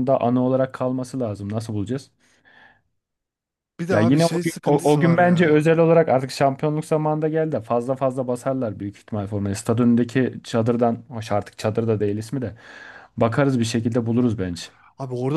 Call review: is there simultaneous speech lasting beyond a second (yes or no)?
yes